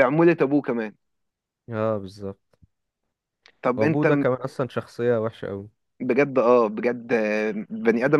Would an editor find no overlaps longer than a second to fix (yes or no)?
yes